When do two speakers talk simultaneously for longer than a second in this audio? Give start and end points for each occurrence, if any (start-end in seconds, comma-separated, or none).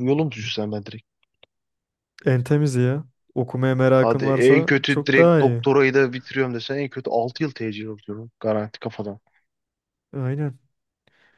4.0-5.6